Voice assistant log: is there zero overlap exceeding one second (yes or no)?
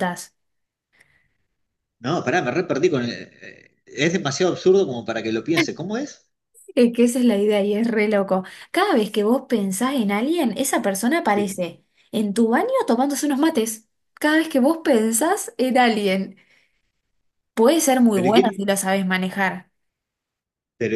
yes